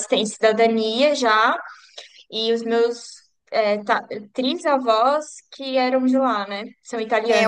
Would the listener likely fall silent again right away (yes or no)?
no